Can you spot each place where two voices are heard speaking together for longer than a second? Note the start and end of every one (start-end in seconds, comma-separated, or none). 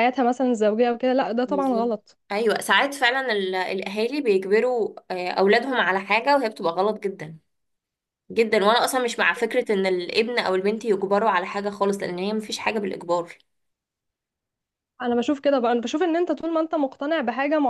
none